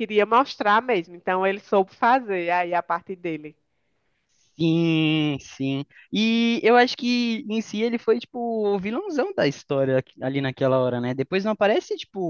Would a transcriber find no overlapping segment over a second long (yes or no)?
yes